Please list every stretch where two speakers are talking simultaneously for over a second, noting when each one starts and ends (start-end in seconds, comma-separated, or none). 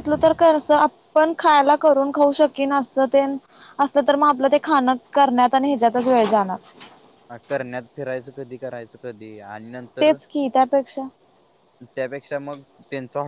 none